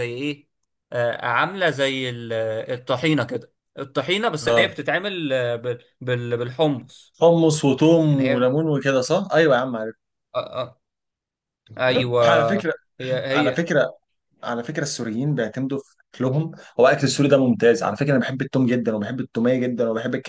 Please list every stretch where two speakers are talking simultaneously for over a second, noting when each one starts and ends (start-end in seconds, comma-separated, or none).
none